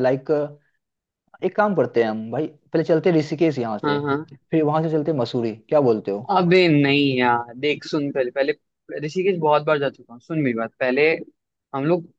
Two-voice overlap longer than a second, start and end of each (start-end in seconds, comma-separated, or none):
none